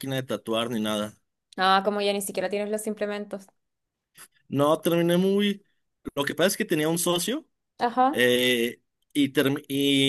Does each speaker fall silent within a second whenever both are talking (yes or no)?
yes